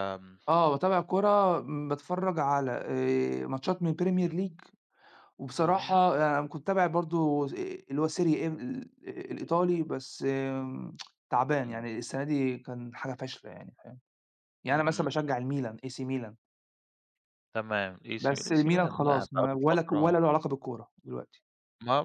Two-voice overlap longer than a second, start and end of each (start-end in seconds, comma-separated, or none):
18.2-20.2